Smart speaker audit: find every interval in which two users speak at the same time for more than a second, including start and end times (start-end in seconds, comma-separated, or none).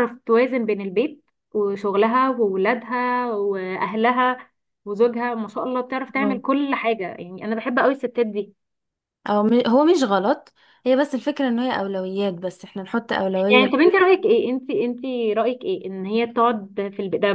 none